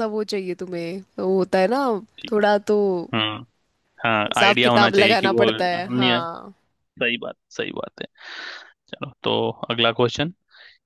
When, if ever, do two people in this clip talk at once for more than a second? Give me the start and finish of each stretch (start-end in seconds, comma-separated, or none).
4.3-6.2